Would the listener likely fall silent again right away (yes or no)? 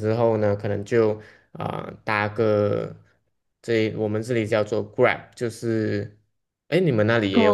no